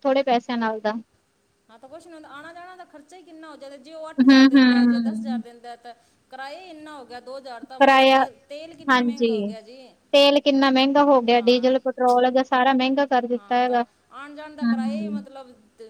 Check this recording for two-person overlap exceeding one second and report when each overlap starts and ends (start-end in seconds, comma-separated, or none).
4.1-5.4